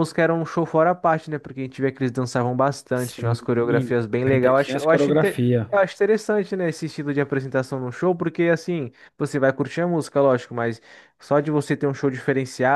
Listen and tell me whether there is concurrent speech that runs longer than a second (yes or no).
yes